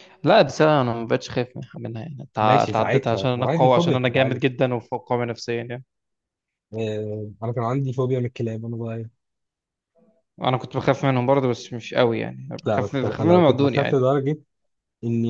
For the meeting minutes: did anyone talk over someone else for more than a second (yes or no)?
yes